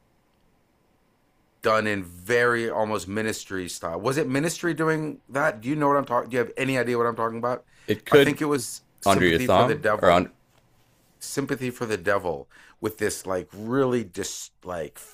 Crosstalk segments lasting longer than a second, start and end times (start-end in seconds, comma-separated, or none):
9.1-10.3